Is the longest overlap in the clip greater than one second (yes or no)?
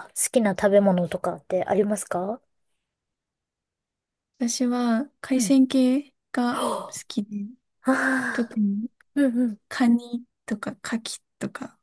no